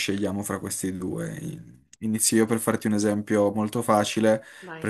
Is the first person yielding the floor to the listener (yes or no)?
no